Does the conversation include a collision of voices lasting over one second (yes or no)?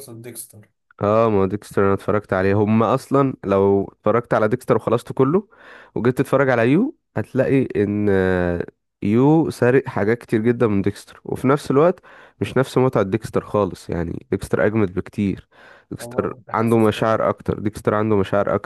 yes